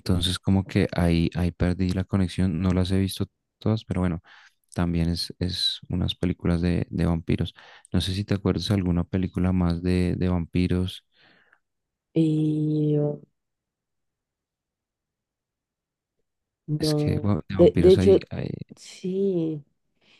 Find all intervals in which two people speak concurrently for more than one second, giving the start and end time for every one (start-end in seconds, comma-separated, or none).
16.8-18.2